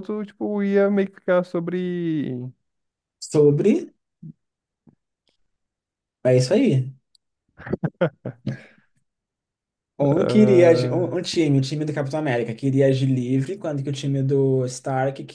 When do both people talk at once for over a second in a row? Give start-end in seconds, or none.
10.0-11.2